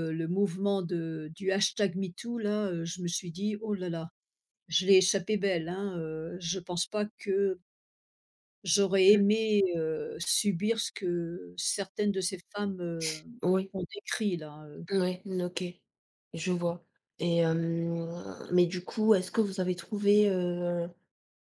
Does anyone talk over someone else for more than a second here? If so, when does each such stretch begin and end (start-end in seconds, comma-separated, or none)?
none